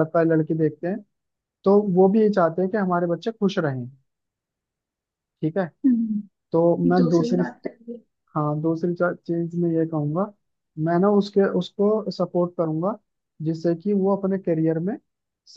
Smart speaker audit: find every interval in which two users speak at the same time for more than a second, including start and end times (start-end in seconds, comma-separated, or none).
none